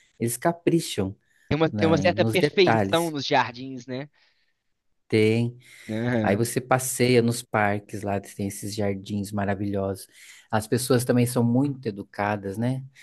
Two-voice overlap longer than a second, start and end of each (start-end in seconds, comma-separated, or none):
1.7-3.1